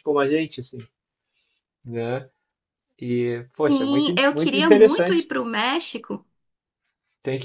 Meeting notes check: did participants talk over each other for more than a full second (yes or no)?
yes